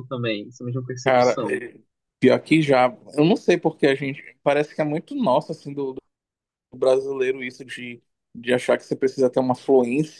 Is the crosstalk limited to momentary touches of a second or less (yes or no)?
yes